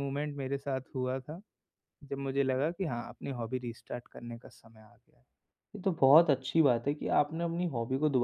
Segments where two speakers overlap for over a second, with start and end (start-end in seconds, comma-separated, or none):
none